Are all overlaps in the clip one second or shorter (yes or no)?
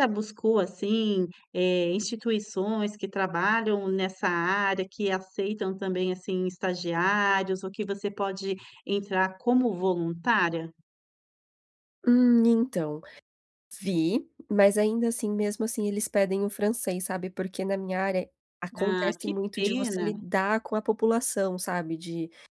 no